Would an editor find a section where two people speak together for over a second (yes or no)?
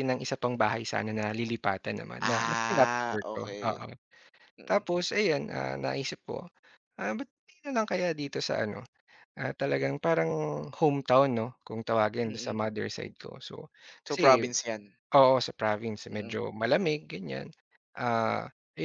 yes